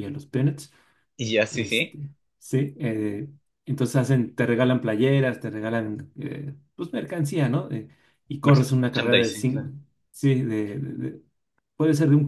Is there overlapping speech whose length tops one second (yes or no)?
yes